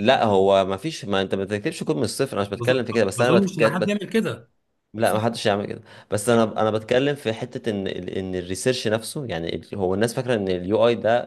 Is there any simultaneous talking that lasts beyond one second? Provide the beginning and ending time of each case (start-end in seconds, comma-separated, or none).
2.5-4.0